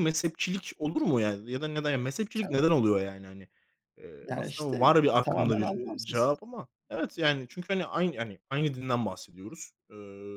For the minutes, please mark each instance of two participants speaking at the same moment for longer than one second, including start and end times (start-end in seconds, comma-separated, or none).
4.2-6.3